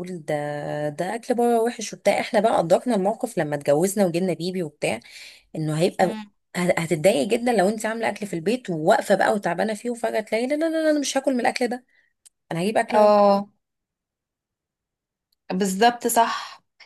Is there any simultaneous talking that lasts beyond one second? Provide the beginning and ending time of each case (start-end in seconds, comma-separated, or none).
none